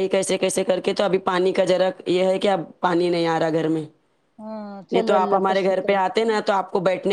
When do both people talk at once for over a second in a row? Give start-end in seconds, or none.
4.9-6.4